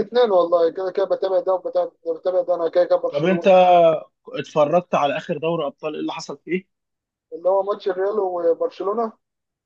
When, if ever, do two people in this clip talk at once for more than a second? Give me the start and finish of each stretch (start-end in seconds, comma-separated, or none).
none